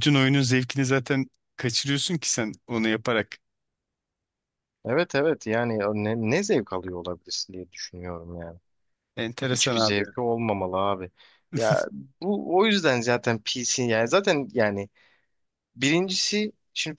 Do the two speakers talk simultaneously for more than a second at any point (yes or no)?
no